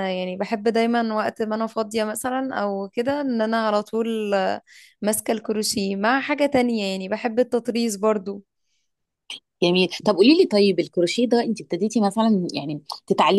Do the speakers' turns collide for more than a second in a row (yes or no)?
no